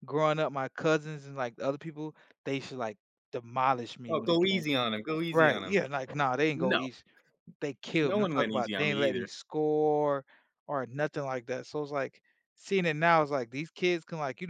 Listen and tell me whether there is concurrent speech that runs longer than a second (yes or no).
yes